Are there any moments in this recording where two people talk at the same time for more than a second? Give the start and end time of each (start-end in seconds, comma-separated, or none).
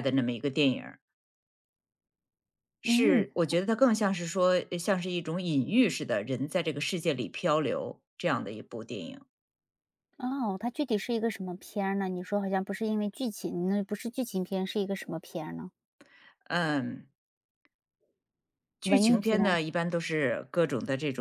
none